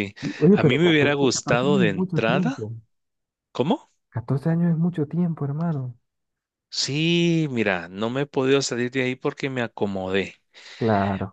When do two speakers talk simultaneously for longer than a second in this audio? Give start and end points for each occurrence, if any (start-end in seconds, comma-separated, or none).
0.5-2.6